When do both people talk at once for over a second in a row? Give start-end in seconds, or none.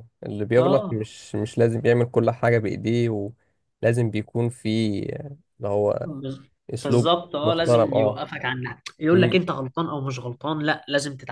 6.8-8.2